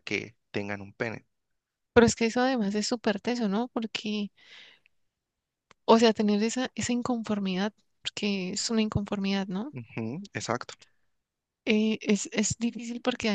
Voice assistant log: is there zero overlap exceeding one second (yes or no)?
yes